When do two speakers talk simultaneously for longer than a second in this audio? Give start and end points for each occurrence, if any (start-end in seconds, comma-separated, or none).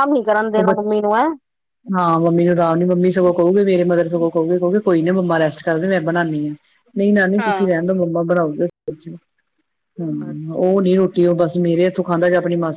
none